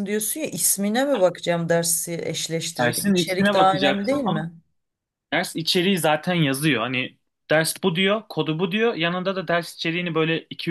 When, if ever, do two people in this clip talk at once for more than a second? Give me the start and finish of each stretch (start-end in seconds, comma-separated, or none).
2.8-4.5